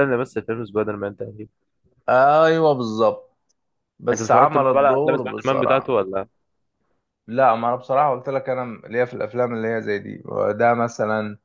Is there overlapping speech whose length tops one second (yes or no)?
yes